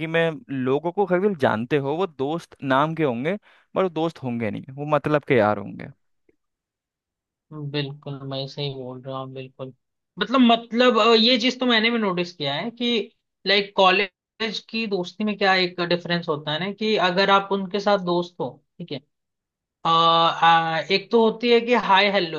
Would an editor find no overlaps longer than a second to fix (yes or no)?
yes